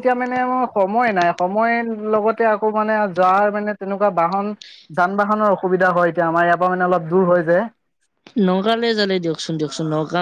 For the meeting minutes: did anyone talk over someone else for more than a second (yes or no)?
no